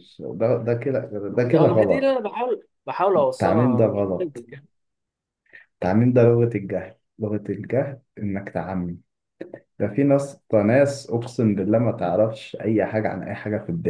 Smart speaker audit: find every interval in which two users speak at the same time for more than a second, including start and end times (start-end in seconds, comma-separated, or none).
3.1-4.4